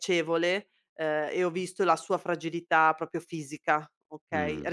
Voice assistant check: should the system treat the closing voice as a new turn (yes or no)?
no